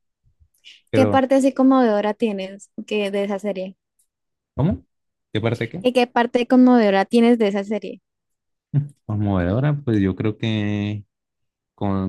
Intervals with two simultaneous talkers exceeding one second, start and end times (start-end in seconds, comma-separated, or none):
none